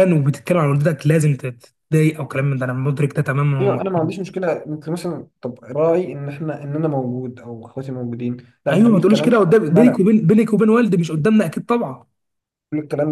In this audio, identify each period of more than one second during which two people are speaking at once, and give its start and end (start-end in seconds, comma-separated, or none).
8.7-10.0